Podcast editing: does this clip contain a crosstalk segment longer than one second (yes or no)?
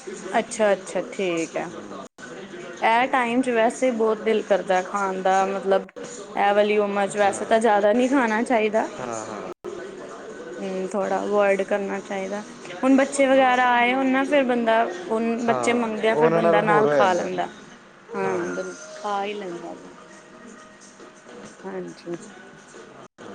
yes